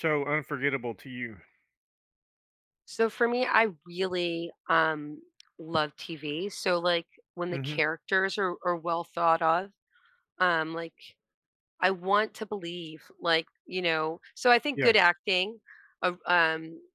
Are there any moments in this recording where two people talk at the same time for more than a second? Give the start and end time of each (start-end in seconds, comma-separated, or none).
none